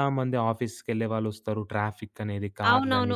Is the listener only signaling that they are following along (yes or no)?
no